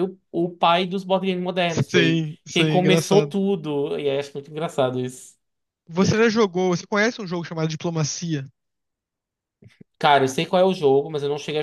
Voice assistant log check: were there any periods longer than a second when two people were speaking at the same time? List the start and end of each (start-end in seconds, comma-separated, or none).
1.9-3.3